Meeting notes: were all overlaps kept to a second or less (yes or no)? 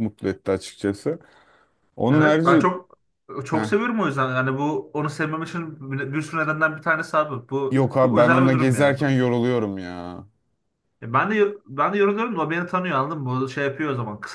no